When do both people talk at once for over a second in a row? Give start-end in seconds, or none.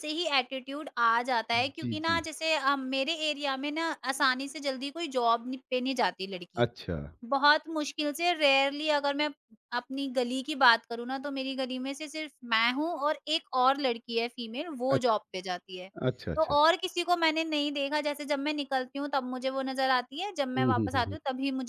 none